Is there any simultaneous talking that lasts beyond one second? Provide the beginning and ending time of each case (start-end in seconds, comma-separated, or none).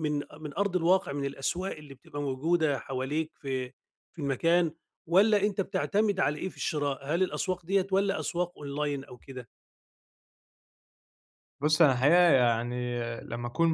none